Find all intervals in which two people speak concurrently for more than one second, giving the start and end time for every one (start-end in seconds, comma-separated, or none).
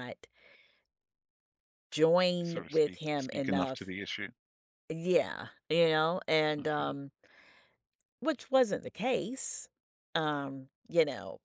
2.4-3.9